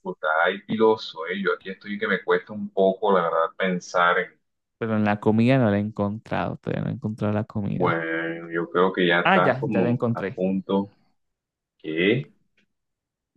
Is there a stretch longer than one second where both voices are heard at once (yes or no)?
yes